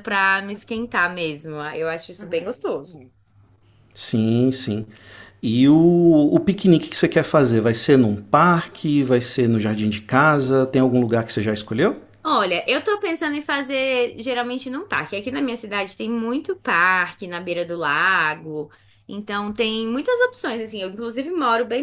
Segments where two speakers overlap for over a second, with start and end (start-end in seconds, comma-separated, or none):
none